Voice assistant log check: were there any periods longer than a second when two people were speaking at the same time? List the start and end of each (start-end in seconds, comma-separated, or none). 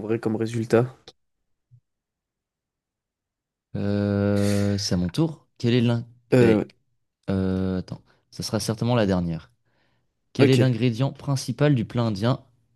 none